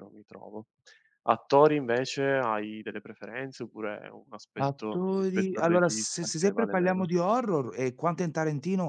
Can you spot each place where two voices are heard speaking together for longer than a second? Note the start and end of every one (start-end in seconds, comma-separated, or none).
4.6-7.1